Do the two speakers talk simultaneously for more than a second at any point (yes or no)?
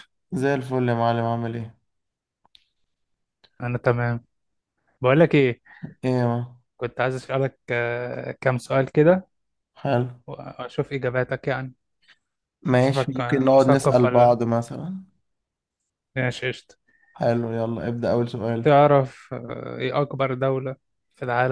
yes